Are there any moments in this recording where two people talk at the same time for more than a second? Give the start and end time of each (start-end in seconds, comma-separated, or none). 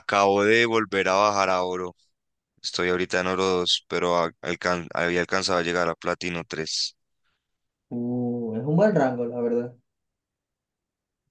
none